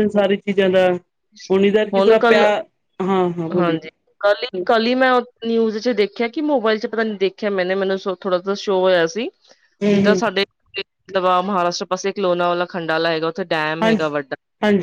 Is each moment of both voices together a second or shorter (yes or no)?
yes